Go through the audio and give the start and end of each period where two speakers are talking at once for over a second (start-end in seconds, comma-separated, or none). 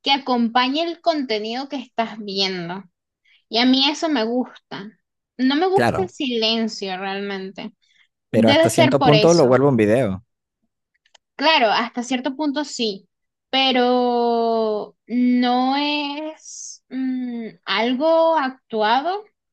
8.3-9.6